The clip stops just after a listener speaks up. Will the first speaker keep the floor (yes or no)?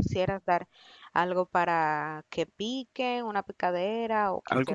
no